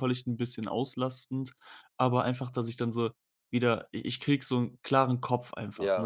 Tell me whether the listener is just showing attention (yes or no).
no